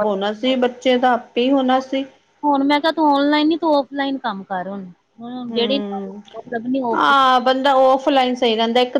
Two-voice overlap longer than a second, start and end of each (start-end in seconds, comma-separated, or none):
none